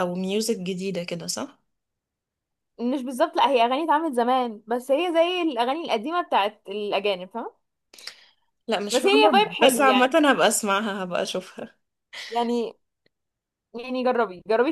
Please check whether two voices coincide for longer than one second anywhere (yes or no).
yes